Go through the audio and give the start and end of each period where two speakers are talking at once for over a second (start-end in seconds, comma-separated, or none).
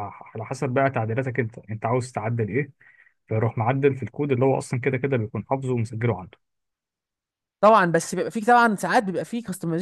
none